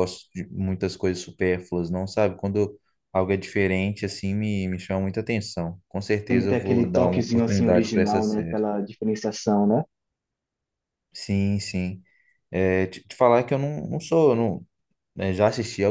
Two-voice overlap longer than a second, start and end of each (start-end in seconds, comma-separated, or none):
6.3-8.6